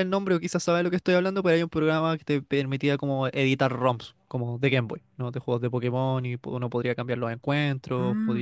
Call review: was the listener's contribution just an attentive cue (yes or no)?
no